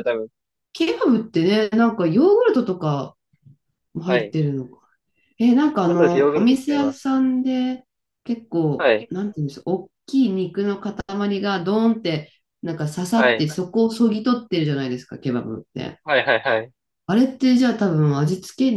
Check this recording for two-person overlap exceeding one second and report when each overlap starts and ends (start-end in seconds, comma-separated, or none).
5.8-7.1